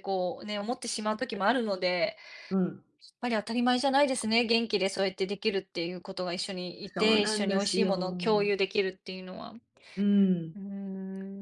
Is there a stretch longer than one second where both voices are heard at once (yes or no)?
yes